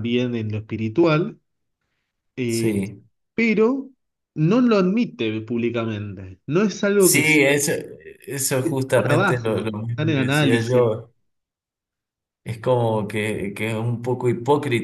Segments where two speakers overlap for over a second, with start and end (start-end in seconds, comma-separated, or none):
8.9-11.0